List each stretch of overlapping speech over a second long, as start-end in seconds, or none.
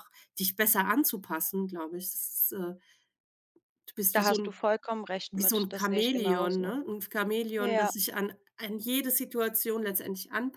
5.3-6.8